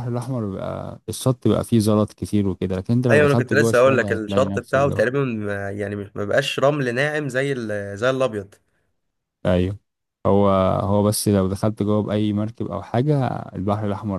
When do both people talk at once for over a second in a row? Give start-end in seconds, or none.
3.1-5.0